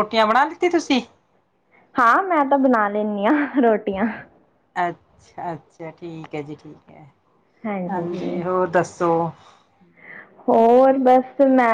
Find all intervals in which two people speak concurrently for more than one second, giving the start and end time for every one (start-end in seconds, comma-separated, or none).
none